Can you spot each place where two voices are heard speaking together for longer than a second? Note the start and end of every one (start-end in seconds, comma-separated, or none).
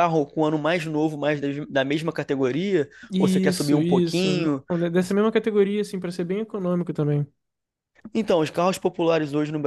3.1-4.6